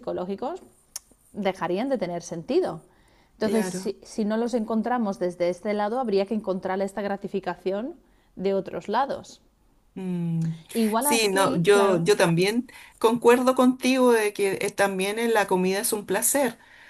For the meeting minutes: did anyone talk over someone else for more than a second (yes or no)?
yes